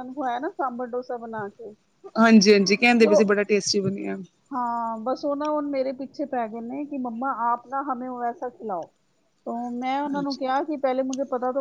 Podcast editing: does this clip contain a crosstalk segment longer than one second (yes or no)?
no